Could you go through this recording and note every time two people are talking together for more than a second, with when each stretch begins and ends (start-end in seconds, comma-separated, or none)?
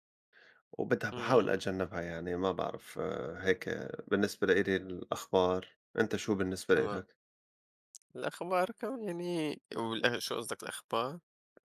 none